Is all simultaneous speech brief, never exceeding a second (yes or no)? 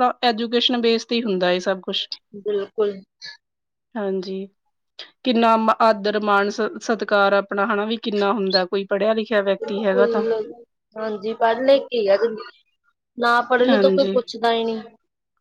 yes